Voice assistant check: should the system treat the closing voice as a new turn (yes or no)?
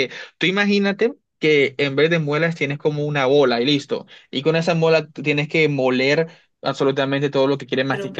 yes